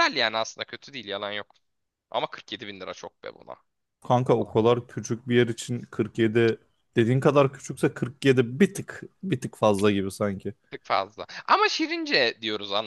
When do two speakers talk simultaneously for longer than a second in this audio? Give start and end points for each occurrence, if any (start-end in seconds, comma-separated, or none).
none